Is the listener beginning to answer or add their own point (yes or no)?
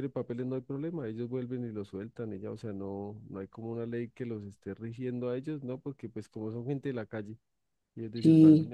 no